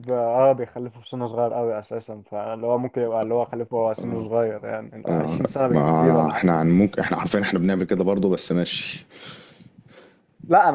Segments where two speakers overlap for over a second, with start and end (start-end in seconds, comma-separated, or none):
5.1-6.5